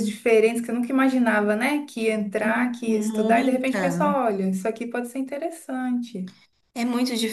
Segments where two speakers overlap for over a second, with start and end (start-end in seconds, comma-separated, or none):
2.4-4.2